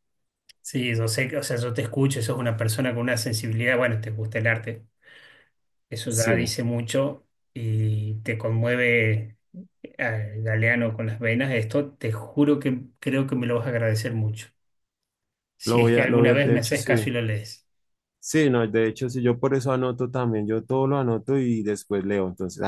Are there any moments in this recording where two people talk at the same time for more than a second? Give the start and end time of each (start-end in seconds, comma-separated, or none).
15.6-17.0